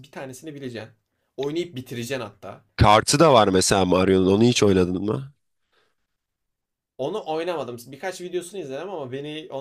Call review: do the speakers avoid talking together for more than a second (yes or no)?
yes